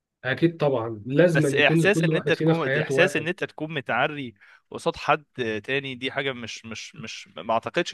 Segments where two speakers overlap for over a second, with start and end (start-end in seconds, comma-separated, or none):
1.3-3.3